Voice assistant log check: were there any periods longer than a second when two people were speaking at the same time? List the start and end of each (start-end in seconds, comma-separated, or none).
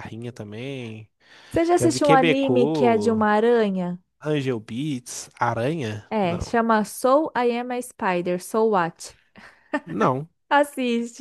1.8-3.2